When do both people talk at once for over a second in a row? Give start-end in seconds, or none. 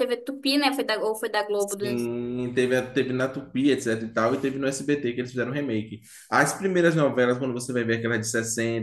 none